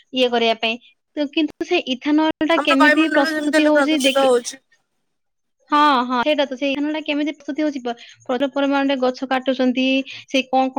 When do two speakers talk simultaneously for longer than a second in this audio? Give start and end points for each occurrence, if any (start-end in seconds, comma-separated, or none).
2.6-4.3